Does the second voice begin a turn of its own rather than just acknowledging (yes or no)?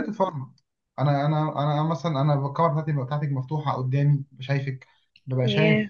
no